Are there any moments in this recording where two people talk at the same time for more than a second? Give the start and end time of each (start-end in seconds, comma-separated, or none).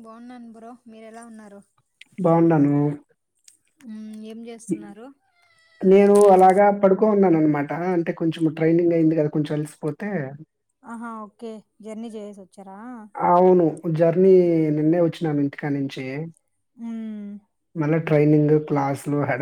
none